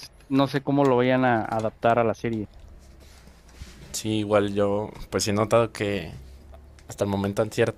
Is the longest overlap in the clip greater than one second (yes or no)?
no